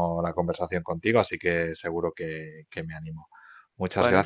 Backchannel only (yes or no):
yes